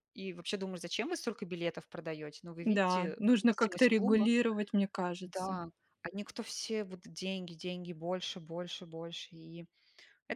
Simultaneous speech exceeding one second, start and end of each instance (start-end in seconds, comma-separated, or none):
2.6-4.3